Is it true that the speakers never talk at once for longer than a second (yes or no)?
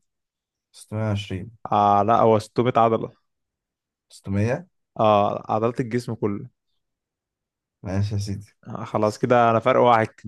yes